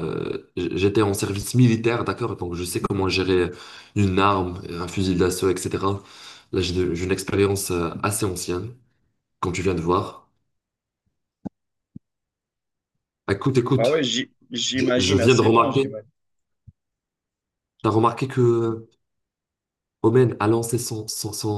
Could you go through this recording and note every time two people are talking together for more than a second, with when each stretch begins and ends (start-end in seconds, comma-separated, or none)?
14.7-16.0